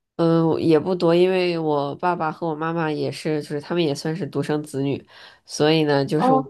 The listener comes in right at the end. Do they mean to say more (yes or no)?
no